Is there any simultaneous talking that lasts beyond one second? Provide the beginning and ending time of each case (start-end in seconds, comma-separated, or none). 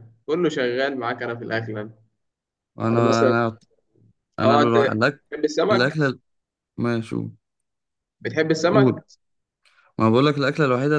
none